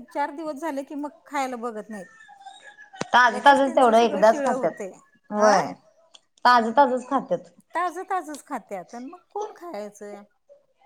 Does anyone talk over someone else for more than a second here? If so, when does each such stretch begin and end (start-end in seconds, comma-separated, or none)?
3.3-4.7